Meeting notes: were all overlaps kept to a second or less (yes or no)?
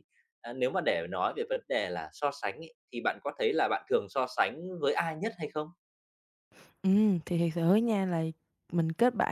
yes